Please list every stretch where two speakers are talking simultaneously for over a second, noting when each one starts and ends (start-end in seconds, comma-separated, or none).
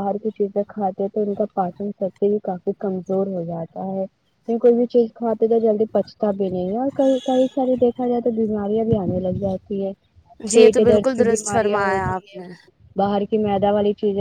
10.5-12.4